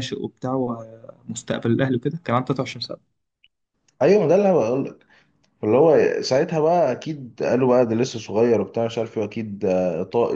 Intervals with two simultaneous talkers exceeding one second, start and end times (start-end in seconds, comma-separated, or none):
none